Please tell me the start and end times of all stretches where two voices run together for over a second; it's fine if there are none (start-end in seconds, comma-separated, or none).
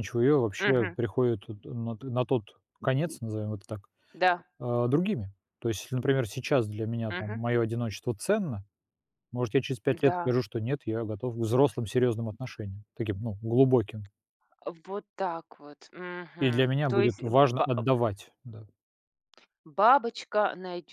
16.4-17.7